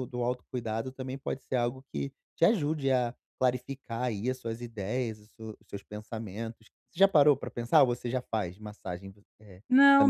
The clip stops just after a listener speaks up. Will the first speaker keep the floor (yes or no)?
no